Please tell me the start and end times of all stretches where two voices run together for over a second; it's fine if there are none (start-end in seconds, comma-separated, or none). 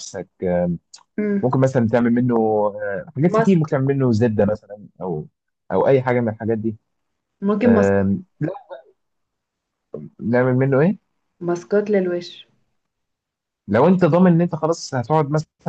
none